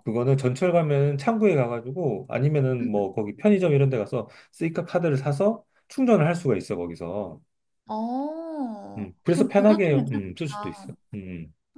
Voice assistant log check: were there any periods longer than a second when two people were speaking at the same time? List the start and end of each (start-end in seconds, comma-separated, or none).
9.0-10.9